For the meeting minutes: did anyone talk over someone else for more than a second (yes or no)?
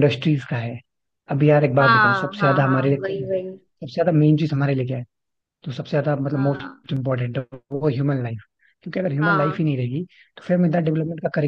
yes